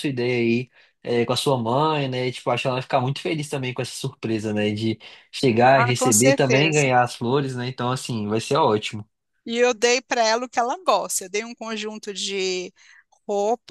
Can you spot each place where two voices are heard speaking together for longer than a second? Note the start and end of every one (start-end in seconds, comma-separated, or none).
5.7-6.9